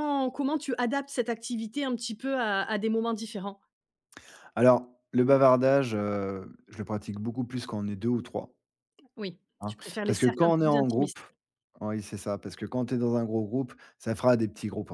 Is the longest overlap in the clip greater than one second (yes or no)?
yes